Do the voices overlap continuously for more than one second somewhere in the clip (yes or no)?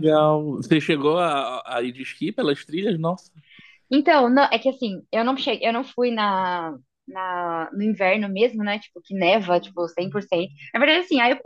no